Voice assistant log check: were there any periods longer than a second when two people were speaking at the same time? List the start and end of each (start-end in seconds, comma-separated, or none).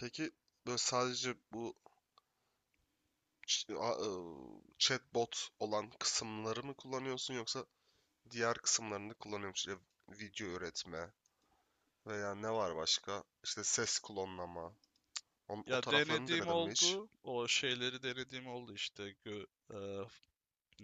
15.7-17.0